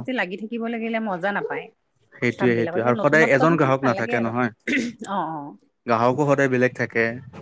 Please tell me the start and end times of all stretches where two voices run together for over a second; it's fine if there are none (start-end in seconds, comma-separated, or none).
2.4-4.3